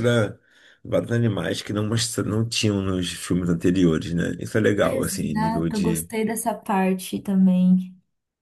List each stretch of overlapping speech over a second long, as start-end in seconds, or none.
4.8-6.1